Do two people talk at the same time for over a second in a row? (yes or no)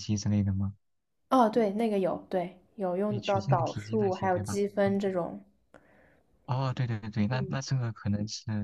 yes